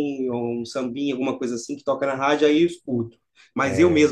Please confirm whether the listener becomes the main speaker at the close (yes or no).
no